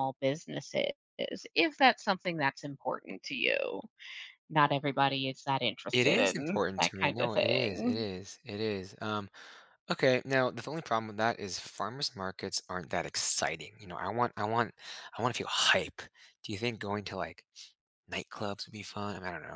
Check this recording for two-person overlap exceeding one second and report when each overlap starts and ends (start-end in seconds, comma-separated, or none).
5.9-8.1